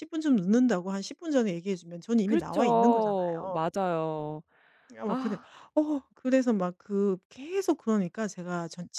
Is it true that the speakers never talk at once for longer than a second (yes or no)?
no